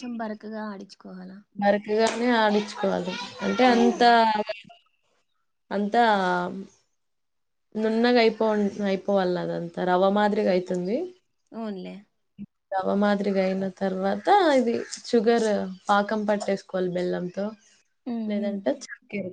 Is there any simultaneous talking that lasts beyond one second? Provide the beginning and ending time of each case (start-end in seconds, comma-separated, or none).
none